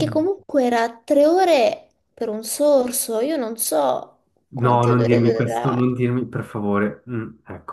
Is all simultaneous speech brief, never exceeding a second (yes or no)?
no